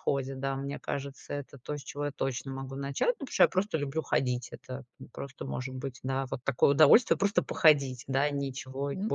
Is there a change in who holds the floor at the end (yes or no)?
yes